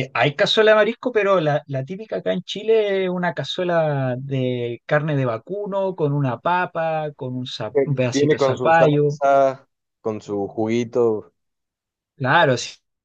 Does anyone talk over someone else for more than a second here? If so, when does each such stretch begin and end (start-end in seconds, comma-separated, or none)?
7.7-9.2